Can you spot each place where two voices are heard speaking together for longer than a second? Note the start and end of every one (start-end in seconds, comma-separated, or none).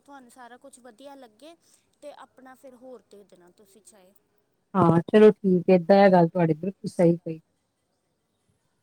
none